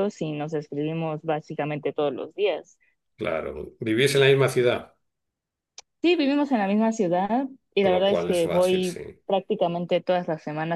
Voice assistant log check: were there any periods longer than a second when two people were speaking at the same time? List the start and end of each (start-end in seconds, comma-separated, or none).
7.8-9.0